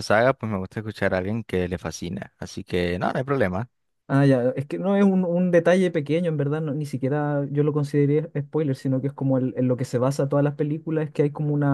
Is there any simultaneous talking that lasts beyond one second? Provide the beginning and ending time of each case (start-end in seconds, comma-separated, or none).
none